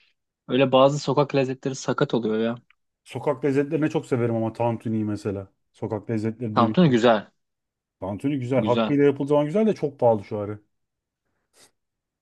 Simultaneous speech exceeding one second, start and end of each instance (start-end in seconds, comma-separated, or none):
none